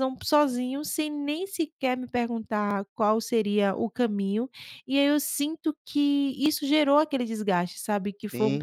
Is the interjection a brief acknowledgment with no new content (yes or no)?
no